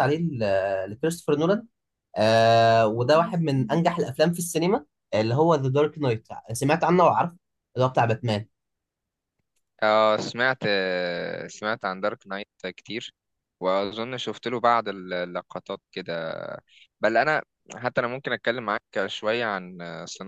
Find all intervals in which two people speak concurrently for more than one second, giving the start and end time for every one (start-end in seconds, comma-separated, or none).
none